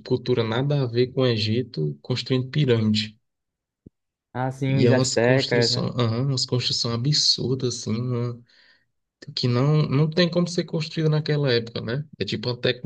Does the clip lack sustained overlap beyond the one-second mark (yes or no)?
no